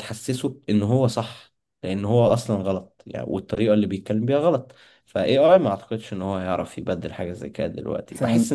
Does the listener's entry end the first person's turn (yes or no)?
no